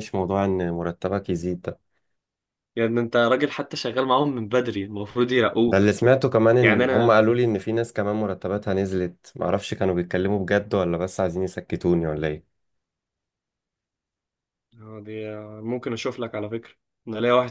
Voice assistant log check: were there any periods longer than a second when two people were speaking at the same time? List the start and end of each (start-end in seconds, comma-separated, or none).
none